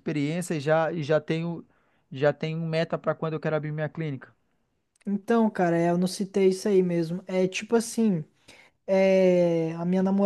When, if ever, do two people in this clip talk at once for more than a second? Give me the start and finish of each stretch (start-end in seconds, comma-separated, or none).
none